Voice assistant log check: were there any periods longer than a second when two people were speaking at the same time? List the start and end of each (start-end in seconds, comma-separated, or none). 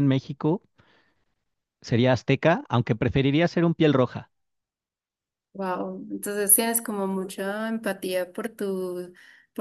none